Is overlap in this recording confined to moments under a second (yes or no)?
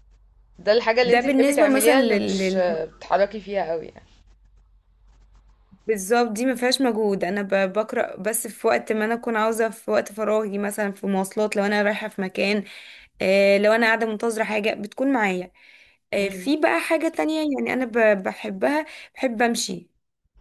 no